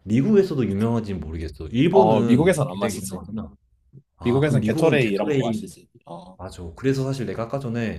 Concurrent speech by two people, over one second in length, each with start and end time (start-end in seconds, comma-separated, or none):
1.9-3.2, 4.2-5.6